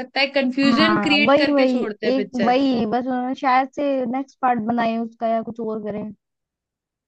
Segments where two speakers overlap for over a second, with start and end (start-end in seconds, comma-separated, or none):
0.6-2.5